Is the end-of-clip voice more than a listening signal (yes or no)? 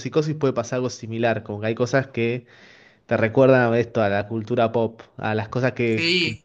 yes